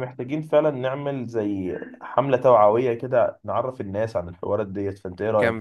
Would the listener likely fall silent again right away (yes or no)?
no